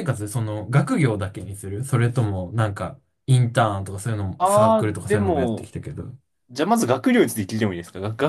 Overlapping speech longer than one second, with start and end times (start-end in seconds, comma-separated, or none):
4.4-5.7